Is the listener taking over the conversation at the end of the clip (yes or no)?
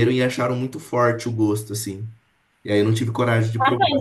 yes